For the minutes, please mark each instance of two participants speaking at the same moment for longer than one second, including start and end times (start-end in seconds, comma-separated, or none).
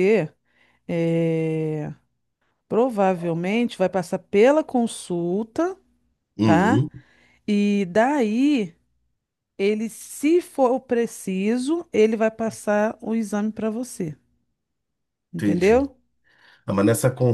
none